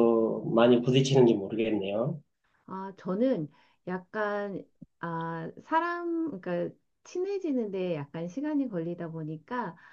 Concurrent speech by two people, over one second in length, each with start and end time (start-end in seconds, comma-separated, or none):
none